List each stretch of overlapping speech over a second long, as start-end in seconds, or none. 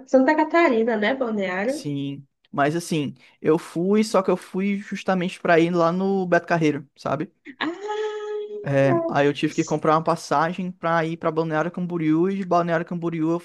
none